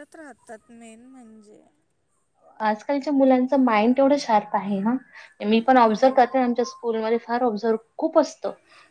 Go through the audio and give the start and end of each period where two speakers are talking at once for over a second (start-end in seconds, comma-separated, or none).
none